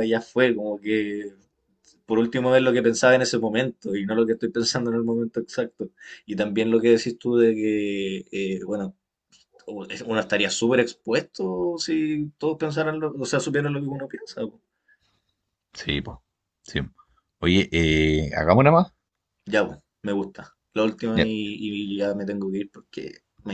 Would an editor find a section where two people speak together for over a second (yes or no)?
no